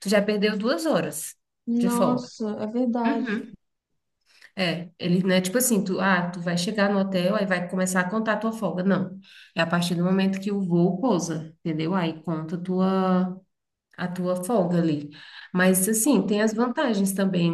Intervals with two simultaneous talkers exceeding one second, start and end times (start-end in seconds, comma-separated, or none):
none